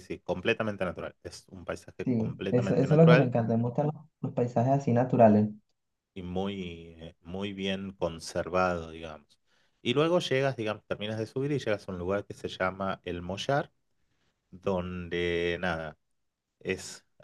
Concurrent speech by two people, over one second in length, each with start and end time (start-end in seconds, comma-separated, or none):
2.0-3.3